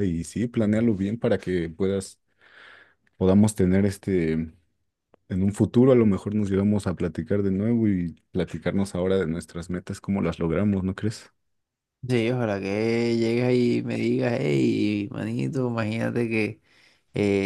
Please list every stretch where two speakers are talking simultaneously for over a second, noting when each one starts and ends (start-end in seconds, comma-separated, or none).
none